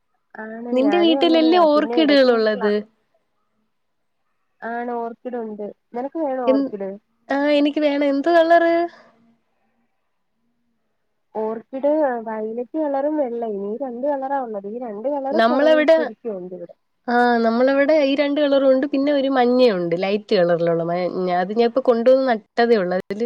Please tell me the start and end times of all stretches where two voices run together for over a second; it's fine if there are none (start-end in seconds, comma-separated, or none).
1.1-2.7